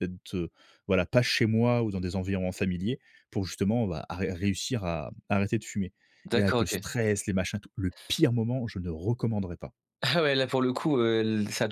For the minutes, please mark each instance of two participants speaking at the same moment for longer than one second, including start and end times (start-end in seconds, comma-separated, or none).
none